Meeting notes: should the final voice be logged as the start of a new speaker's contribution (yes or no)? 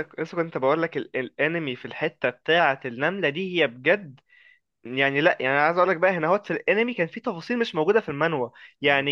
no